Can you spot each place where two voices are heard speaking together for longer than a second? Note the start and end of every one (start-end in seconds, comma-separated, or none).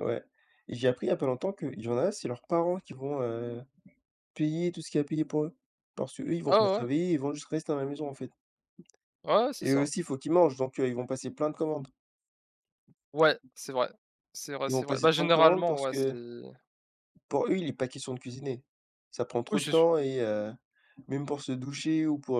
14.7-16.1